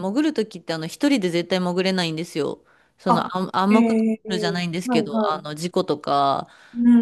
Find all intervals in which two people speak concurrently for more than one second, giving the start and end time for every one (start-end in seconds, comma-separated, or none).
3.1-5.5